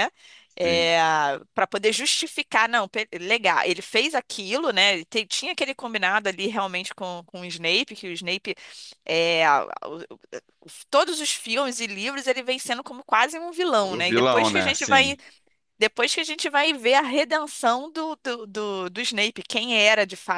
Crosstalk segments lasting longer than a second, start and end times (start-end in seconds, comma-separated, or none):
13.8-15.2